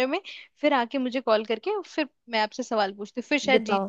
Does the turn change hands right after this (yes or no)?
yes